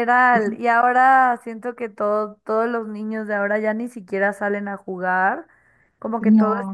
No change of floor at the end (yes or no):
yes